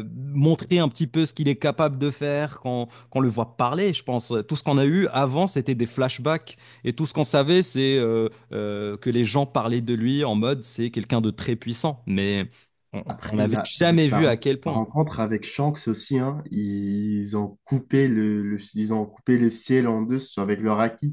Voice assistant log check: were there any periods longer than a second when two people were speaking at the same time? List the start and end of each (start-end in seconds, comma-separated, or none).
13.1-14.9